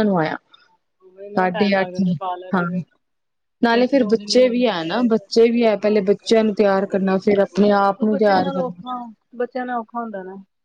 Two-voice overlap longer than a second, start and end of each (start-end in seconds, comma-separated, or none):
3.8-5.3